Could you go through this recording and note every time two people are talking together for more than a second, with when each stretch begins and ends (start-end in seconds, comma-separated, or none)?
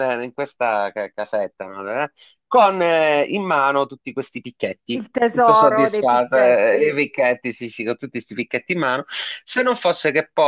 5.0-7.0